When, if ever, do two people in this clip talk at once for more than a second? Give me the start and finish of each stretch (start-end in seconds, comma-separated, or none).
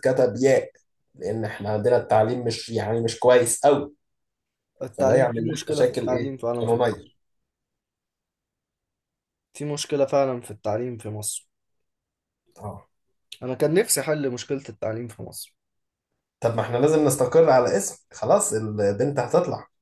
5.0-7.1